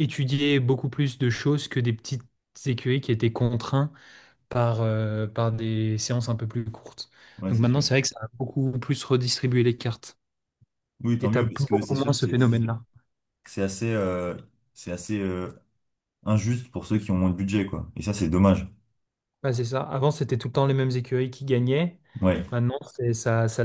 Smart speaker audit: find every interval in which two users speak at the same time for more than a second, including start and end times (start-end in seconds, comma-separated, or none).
11.2-12.8